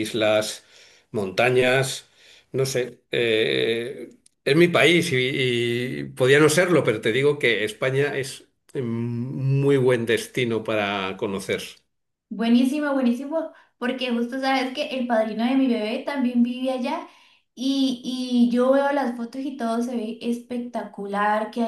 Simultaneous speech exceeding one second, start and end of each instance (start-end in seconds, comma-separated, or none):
none